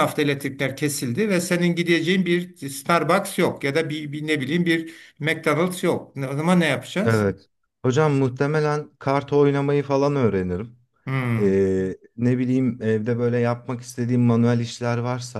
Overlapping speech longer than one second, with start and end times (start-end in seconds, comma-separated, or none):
none